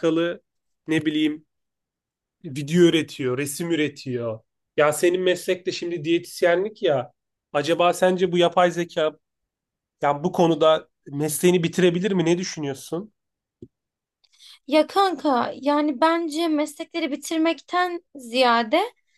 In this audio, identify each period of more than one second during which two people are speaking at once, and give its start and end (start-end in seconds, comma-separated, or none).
none